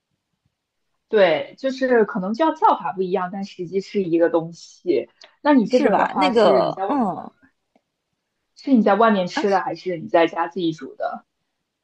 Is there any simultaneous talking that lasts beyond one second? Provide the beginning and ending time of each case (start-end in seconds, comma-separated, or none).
5.7-7.0